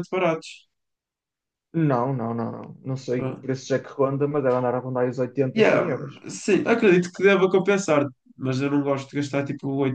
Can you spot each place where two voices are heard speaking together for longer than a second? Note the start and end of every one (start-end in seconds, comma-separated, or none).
none